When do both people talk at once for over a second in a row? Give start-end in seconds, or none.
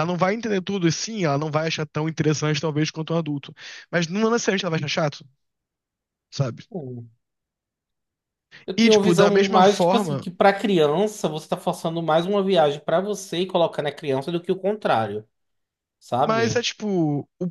8.8-10.2